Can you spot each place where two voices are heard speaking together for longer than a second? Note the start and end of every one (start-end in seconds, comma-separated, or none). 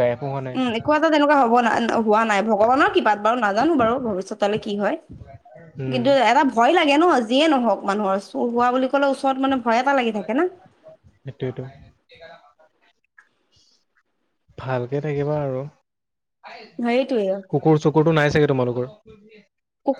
none